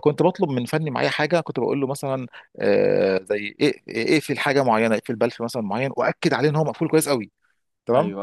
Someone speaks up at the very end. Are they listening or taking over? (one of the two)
listening